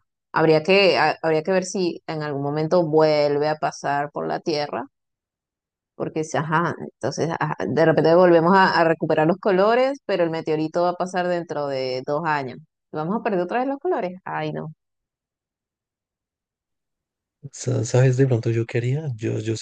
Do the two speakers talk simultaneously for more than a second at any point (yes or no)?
no